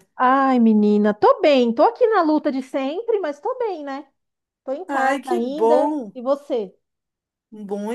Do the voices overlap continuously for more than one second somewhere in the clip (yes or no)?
yes